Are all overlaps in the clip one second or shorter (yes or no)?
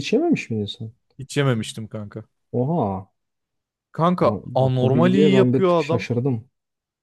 no